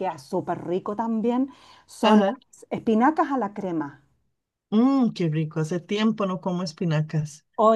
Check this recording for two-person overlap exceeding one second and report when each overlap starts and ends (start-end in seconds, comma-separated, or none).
none